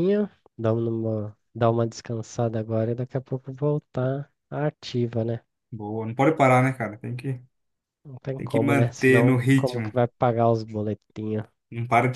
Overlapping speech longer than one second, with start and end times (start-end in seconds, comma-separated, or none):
8.4-9.9